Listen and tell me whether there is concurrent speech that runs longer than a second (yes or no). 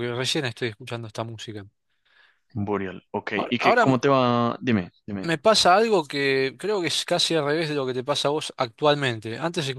no